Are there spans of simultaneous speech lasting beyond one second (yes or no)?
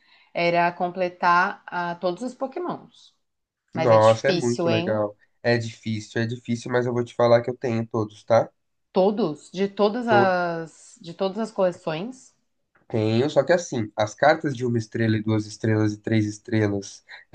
yes